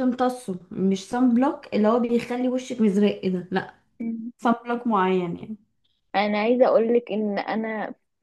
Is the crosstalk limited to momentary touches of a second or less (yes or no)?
yes